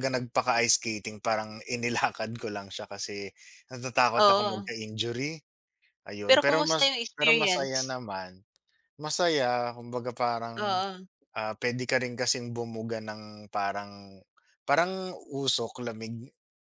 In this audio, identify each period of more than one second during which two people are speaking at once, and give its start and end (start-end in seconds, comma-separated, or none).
6.3-8.0